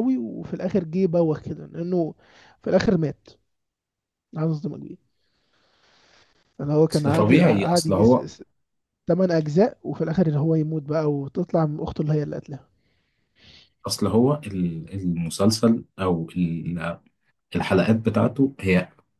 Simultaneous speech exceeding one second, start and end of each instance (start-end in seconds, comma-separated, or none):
6.9-8.2